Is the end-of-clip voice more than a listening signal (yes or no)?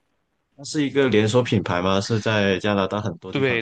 yes